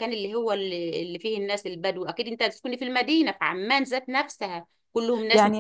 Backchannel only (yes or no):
yes